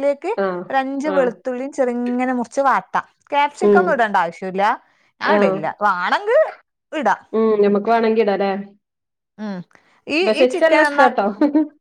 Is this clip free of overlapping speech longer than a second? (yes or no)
yes